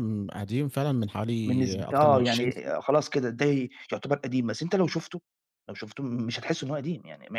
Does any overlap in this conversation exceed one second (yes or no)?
yes